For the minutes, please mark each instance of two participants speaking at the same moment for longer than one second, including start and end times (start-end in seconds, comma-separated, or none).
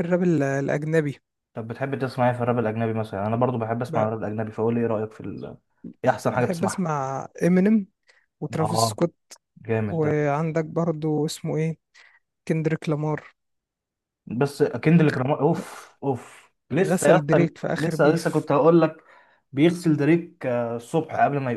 16.8-18.5